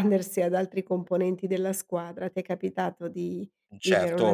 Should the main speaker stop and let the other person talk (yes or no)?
yes